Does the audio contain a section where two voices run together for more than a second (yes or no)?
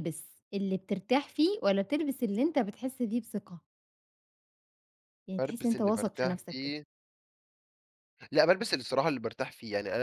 yes